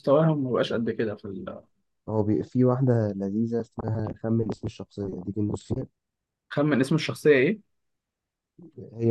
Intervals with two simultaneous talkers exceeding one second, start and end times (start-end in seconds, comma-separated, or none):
none